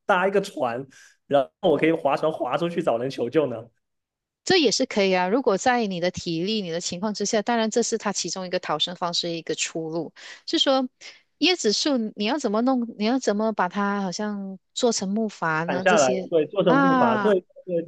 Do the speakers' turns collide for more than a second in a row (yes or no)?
yes